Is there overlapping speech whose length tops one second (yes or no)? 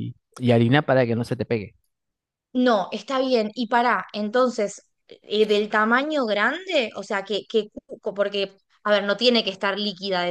no